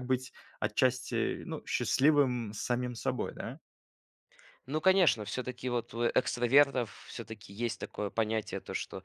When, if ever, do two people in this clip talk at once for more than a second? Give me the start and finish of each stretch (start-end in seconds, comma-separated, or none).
none